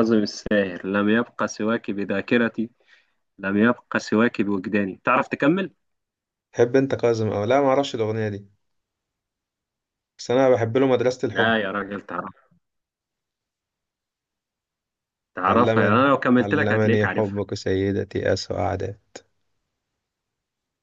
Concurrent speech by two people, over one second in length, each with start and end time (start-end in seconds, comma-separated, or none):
15.5-17.4